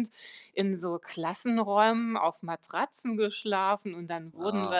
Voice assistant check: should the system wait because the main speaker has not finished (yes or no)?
yes